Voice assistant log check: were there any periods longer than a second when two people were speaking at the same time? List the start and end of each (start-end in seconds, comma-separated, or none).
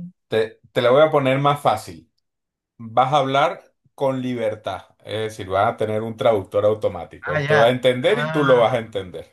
7.2-8.8